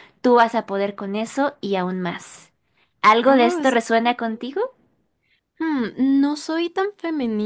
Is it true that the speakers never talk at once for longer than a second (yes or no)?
no